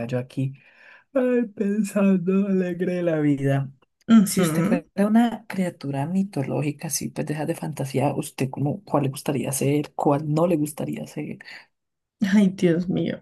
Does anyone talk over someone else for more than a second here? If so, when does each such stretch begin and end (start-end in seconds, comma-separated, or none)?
none